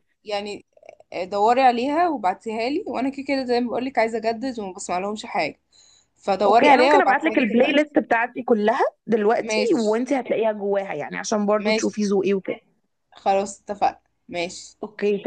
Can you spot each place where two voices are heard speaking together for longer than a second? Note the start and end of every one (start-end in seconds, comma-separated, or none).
6.5-7.8